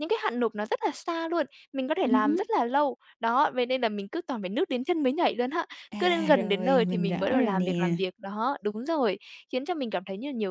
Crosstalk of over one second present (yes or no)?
yes